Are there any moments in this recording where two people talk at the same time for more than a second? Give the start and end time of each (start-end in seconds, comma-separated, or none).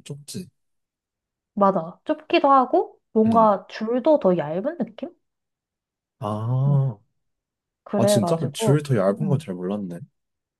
8.0-9.5